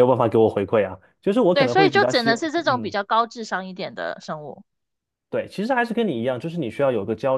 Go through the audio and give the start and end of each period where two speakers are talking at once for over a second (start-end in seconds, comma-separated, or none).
1.5-3.0